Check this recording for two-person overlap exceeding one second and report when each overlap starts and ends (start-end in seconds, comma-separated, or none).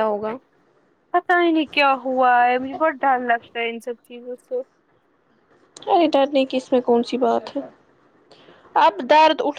none